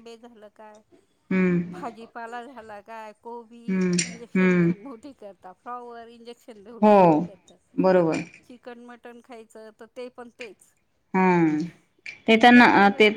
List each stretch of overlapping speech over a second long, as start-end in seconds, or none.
none